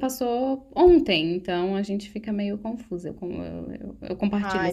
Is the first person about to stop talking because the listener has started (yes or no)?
yes